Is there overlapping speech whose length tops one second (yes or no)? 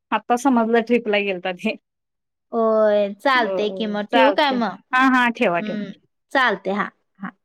no